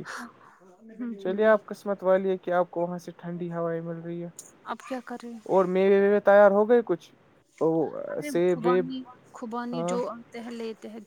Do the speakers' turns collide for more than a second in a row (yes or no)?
no